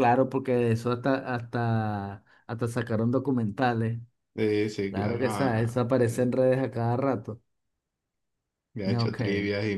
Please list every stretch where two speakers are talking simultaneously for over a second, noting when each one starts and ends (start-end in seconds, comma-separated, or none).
4.9-6.3